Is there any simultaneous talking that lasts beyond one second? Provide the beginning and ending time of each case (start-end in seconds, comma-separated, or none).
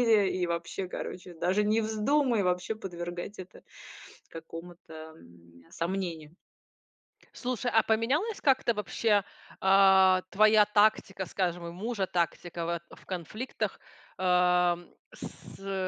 none